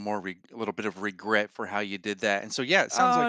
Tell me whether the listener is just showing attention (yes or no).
no